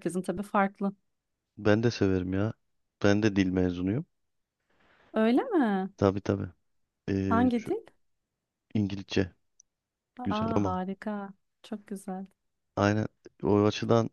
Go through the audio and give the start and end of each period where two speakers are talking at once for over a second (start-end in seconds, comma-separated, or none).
none